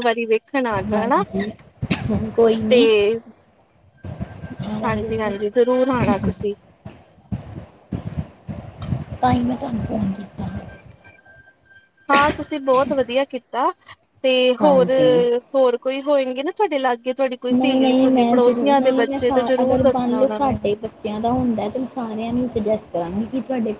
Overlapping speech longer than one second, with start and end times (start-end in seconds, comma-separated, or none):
17.5-20.6